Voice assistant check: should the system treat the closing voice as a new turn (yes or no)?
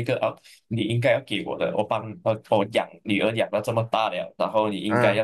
no